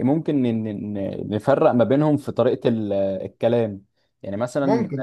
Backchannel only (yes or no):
yes